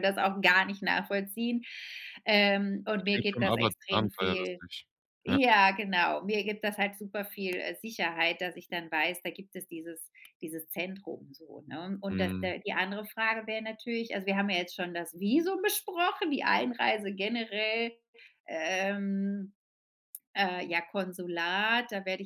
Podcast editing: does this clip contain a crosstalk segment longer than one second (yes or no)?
yes